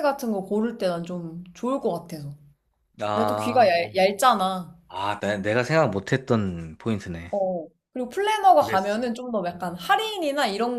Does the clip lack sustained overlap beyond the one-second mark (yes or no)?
yes